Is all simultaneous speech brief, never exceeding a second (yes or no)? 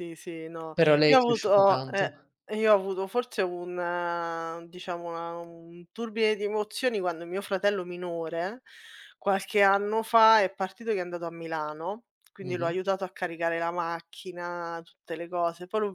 no